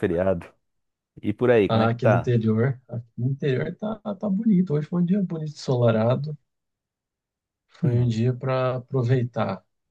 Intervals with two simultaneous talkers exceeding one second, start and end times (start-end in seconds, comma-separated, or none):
none